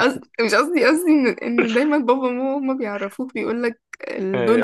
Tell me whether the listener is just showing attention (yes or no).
no